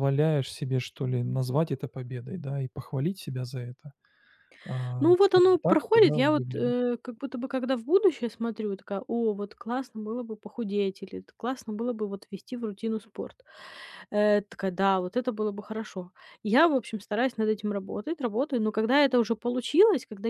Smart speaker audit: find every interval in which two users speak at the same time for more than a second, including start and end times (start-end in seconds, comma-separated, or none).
5.0-6.7